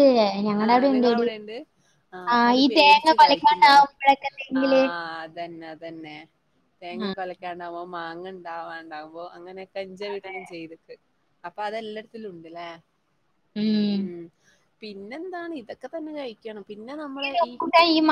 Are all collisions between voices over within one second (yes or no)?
no